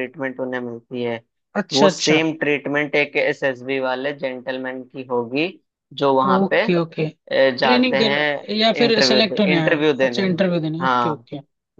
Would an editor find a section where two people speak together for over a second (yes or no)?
yes